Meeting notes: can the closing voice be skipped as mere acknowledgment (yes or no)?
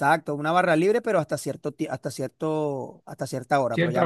yes